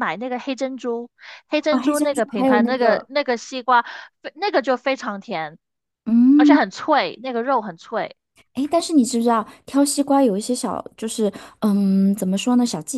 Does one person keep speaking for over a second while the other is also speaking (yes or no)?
yes